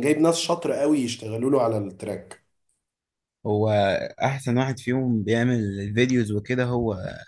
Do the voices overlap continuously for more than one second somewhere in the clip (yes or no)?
no